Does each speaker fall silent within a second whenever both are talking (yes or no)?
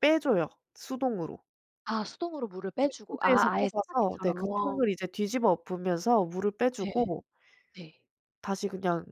no